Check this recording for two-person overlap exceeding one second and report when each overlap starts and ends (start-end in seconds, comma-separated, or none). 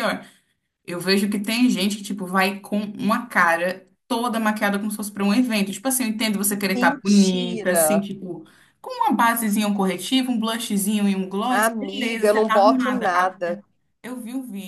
6.7-8.1, 11.5-13.6